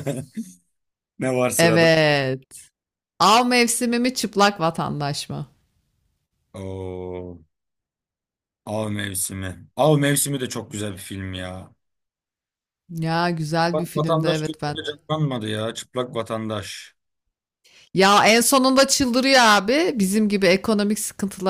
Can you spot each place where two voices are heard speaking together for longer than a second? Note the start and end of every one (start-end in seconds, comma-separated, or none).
13.7-14.9